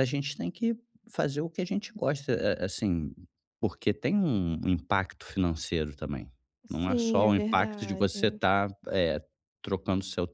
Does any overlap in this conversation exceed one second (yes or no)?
yes